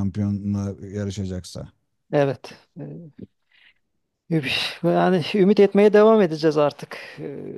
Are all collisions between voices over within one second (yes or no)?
yes